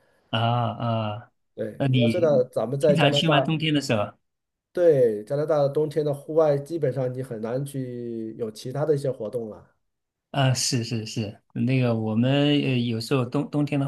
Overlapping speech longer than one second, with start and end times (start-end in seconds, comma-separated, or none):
1.8-3.5